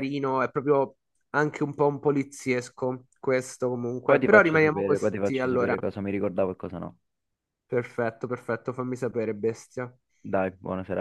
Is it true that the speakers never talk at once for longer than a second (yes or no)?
no